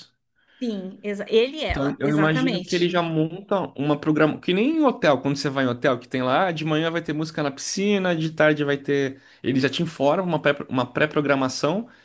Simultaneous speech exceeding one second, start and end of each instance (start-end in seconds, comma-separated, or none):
1.7-2.9